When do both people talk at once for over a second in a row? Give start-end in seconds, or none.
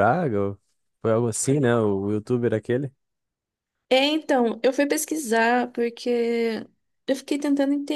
none